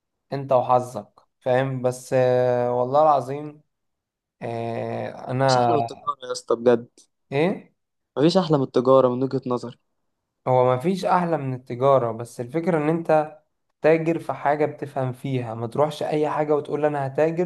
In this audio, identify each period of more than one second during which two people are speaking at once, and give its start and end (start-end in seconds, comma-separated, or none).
none